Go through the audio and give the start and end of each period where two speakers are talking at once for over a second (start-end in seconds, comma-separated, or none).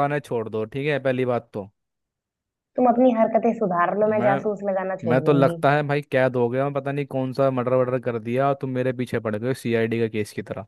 none